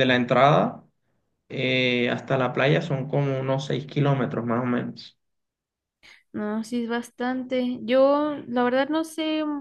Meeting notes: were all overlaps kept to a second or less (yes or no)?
yes